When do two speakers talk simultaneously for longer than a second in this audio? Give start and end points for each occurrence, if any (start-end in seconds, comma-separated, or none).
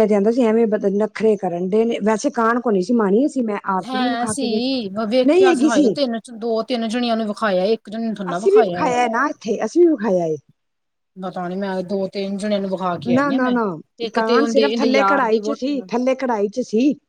14.2-15.9